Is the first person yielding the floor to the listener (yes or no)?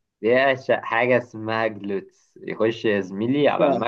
no